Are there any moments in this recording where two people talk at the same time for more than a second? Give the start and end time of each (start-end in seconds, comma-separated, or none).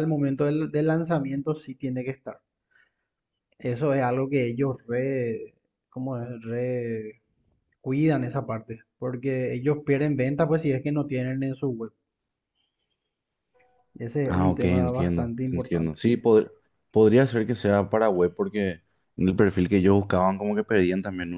14.2-16.0